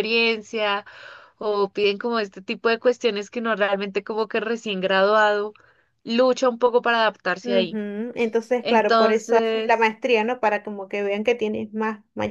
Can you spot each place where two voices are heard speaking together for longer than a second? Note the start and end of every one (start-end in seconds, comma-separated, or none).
8.6-9.9